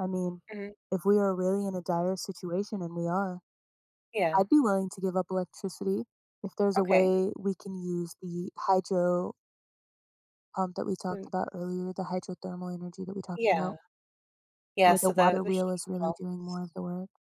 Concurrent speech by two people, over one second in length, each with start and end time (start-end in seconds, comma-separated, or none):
14.8-16.7